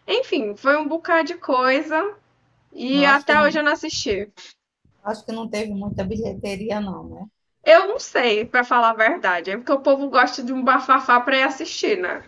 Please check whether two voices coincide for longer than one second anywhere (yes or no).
no